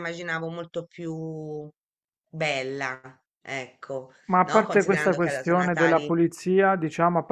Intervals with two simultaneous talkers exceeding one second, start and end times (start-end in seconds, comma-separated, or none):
4.3-6.1